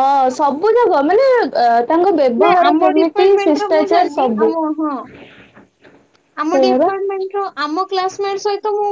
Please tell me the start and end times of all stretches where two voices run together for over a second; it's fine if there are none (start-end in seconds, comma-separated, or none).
2.4-4.5